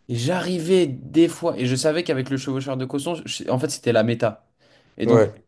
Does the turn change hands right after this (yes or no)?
no